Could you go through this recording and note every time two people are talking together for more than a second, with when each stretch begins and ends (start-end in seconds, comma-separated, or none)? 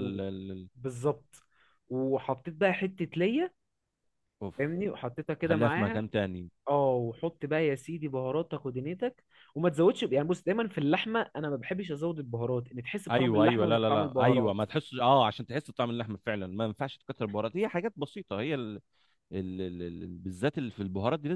13.1-14.6